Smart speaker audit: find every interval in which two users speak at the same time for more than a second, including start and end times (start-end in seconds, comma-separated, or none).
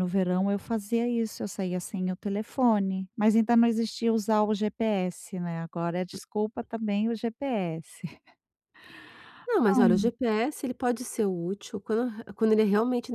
none